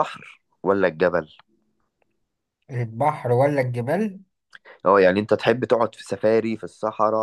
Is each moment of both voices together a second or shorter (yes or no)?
yes